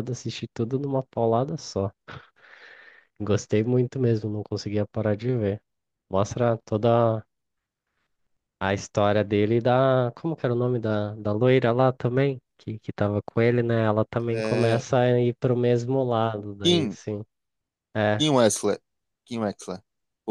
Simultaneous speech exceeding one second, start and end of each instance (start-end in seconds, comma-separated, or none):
none